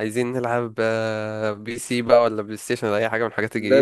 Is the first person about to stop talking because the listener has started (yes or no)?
yes